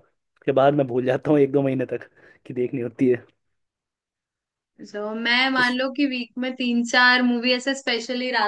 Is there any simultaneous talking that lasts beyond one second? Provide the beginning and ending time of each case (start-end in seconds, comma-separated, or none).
none